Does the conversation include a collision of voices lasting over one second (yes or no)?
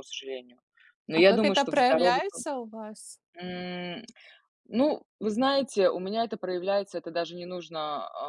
yes